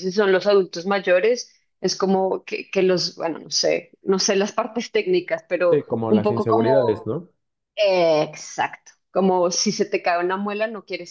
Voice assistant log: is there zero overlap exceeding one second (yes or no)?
no